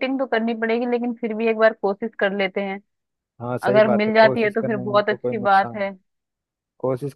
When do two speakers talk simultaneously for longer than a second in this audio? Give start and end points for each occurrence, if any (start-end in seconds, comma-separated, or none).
3.7-5.9